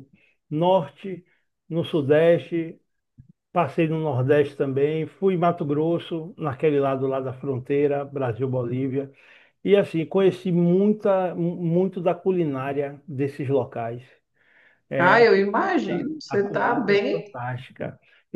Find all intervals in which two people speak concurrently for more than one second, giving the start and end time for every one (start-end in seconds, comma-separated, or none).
15.0-17.4